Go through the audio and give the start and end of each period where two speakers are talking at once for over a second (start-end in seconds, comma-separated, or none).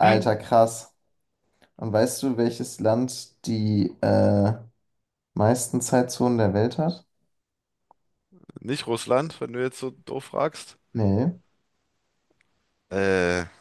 none